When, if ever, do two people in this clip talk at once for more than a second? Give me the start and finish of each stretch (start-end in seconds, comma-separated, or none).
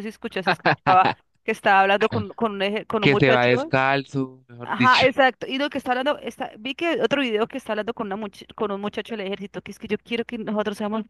none